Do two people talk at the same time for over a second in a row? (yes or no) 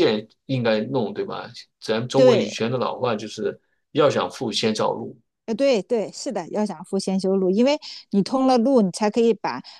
no